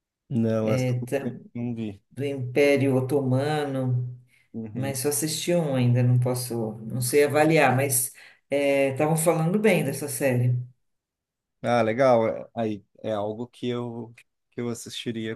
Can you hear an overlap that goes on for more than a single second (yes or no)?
no